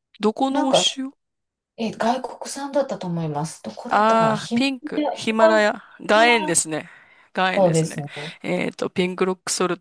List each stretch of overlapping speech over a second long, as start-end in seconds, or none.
3.9-5.7